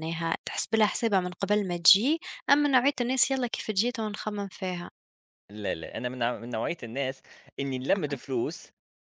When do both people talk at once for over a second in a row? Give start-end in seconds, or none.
none